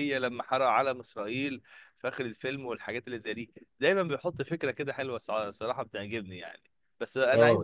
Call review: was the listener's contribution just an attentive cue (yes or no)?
yes